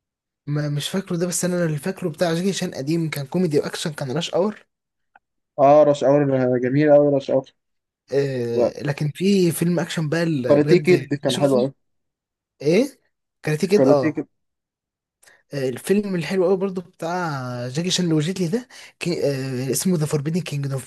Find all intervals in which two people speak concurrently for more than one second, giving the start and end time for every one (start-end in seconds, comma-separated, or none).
10.4-11.7